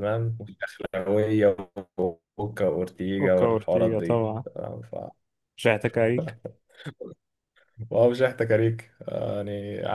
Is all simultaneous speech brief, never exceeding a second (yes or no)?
no